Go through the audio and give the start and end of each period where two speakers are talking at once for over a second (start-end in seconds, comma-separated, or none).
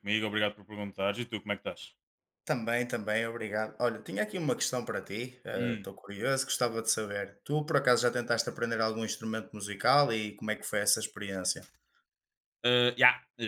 none